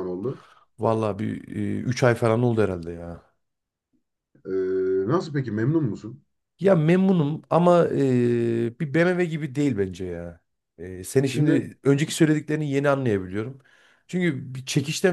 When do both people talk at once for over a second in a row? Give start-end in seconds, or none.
none